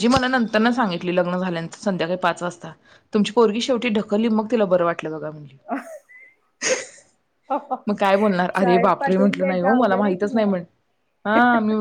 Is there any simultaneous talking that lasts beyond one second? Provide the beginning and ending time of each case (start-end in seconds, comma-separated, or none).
8.6-10.5